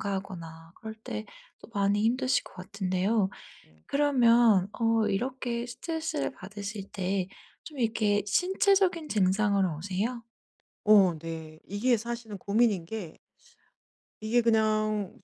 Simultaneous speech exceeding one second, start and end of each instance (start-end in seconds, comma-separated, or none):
none